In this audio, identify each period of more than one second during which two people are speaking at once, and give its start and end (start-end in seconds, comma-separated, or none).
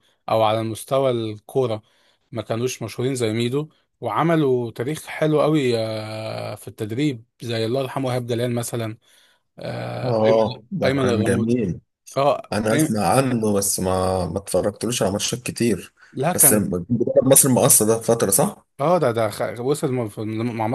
10.0-11.6